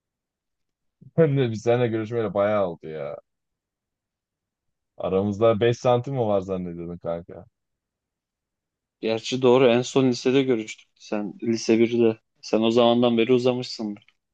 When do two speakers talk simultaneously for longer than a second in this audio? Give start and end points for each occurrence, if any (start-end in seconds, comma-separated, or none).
none